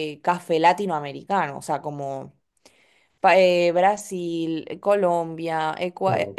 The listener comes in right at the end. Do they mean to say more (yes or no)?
no